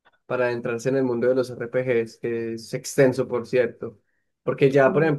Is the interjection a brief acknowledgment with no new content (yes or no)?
yes